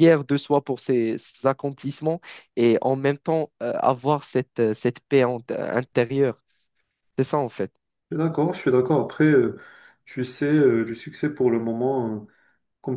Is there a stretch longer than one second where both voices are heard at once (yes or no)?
no